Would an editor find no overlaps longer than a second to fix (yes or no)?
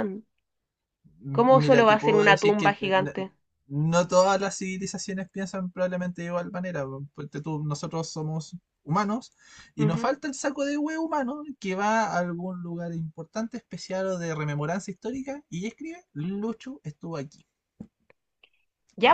no